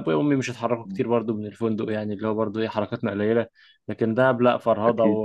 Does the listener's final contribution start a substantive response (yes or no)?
no